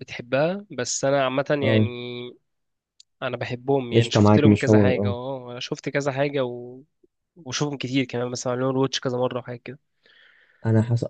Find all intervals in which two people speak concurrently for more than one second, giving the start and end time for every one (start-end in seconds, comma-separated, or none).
3.9-5.2